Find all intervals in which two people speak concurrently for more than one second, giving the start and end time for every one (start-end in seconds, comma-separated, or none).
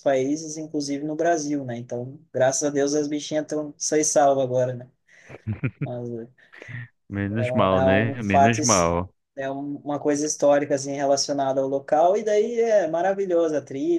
7.3-8.9